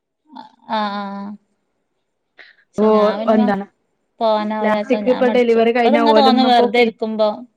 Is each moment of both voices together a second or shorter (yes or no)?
no